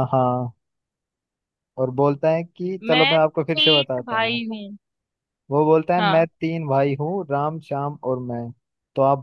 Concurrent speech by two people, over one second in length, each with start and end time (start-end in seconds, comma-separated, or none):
2.9-4.4